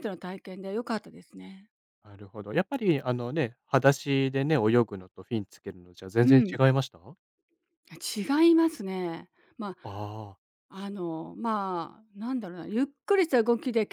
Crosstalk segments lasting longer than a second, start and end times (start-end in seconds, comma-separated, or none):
none